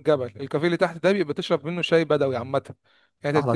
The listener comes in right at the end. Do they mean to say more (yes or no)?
no